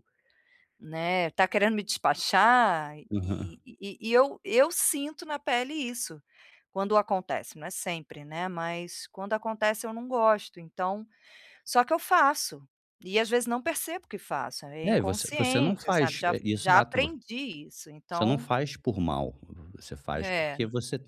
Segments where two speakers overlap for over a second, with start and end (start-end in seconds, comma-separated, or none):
14.8-17.1